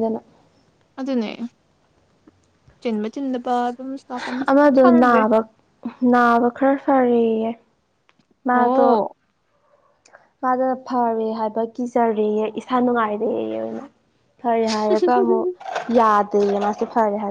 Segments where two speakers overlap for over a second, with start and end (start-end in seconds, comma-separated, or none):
none